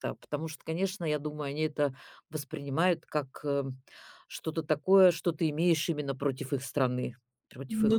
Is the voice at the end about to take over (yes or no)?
yes